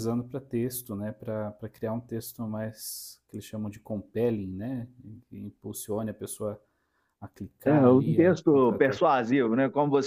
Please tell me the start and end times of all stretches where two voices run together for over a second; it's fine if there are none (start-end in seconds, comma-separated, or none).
7.6-9.0